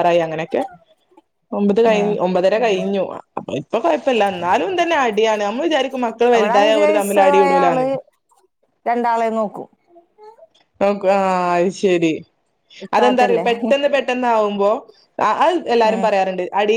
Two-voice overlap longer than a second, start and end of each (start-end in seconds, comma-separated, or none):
6.4-7.8